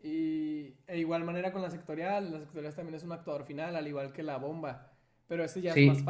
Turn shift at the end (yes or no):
no